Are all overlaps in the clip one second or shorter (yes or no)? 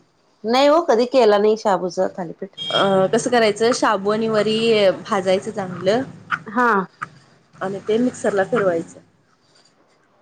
yes